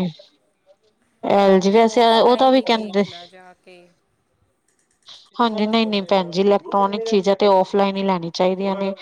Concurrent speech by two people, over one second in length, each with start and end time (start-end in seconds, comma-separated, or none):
1.4-3.0